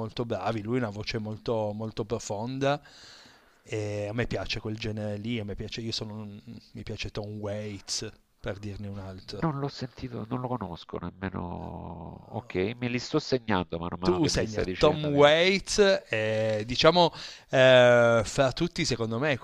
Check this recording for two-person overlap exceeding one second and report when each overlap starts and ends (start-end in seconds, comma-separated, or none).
14.0-15.2